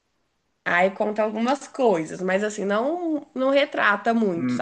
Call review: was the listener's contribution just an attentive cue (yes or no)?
no